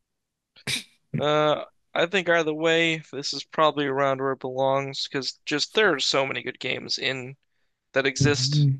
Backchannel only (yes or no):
no